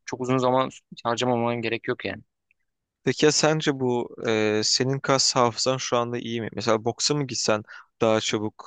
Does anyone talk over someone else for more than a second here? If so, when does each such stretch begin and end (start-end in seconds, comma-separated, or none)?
none